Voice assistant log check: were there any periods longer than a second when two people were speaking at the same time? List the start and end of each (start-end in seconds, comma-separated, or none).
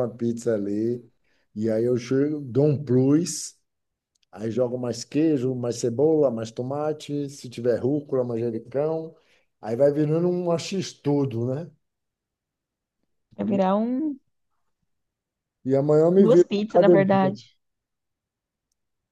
16.2-17.4